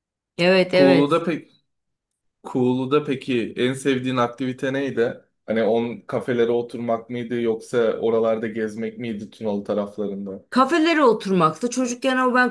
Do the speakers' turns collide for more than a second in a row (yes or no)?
no